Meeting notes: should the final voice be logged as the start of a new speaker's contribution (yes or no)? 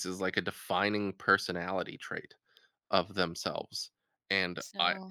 no